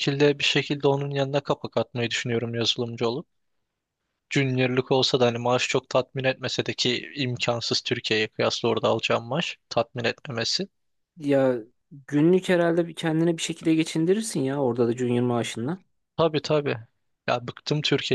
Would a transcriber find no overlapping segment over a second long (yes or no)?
yes